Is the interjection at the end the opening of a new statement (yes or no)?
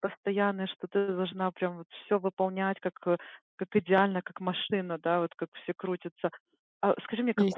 no